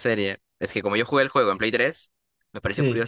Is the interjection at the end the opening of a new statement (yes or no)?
no